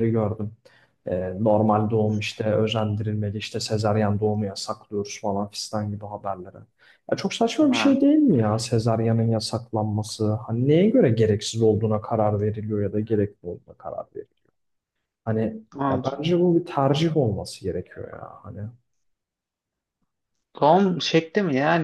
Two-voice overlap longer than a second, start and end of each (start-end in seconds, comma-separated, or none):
none